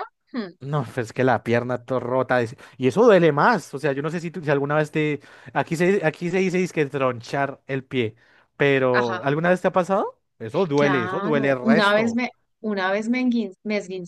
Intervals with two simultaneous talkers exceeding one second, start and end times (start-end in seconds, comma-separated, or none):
10.8-12.2